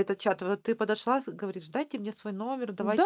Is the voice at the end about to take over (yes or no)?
yes